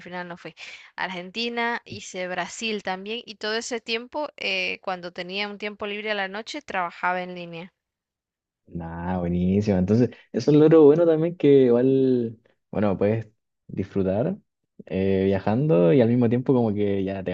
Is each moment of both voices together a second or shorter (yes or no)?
yes